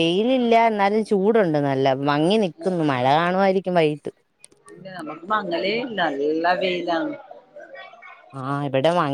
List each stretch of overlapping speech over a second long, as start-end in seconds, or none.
none